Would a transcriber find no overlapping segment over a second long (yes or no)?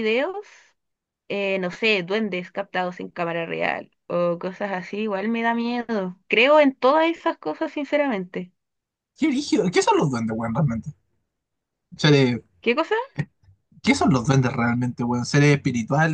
yes